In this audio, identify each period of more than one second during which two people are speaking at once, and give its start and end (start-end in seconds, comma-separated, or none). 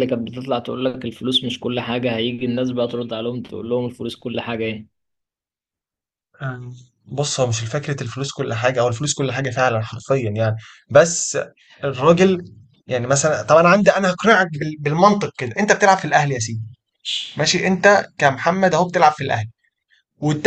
none